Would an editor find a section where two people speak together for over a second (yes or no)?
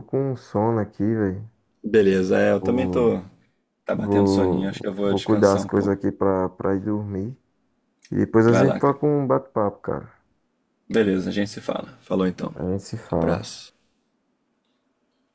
yes